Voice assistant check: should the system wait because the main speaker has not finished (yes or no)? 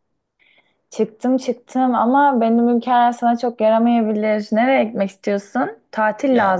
yes